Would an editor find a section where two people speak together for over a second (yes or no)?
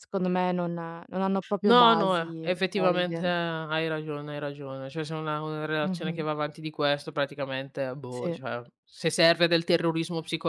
yes